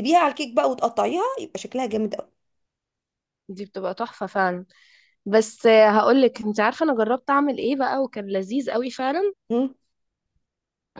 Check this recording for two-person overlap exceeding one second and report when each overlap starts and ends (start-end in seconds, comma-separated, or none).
none